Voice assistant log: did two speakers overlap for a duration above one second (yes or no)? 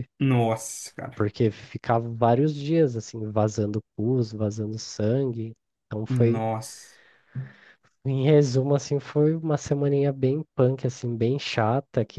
no